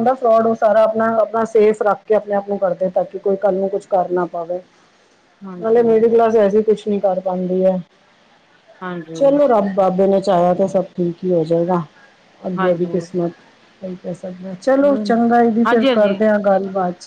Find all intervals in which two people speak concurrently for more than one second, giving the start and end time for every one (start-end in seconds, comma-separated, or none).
14.8-16.2